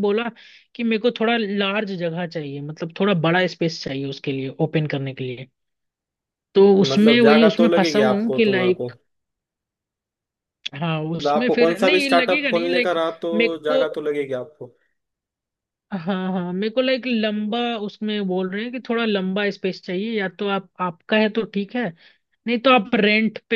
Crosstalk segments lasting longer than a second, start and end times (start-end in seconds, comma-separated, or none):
6.8-8.9, 11.2-13.8